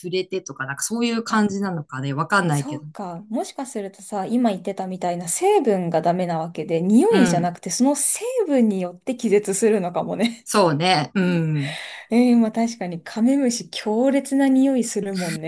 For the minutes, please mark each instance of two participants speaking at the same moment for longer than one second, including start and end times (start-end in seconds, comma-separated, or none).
none